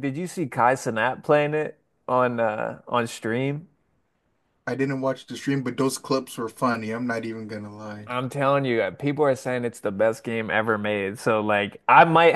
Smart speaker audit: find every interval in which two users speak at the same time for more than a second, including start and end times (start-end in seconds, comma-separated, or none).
none